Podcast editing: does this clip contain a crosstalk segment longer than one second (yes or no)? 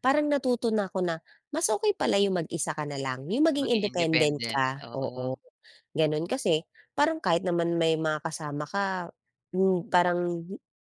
yes